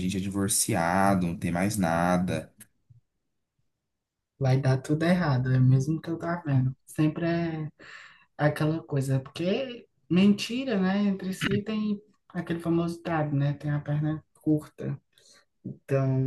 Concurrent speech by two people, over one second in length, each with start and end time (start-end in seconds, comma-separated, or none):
none